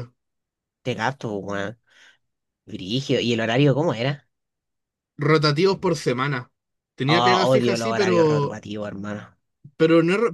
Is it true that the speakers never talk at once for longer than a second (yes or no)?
no